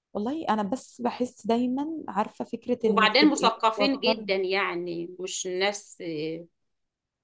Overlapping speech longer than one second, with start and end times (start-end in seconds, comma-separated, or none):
2.8-4.3